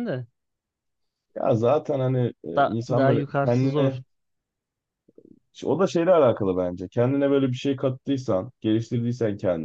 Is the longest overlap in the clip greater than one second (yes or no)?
yes